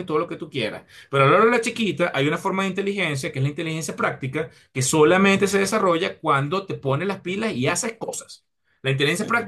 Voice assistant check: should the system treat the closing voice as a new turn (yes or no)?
no